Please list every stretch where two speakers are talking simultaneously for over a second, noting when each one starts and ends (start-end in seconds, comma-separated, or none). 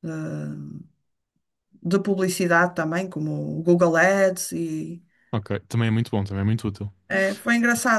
none